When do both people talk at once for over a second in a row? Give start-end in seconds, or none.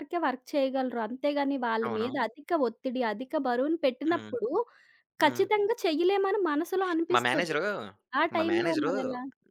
none